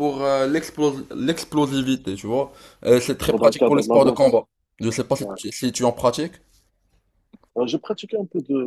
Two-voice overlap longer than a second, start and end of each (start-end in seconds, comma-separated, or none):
3.2-4.4